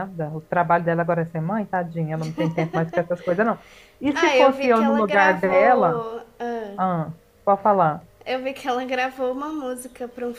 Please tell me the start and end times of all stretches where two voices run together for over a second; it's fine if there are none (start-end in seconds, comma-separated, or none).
4.1-6.0